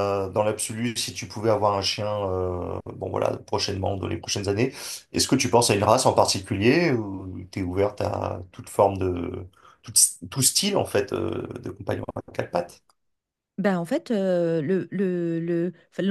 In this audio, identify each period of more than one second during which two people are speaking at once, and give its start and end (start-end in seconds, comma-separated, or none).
none